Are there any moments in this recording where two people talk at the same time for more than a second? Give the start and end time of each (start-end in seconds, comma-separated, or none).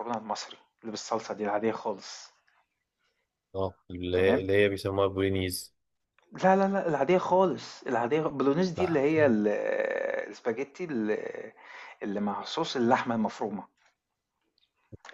none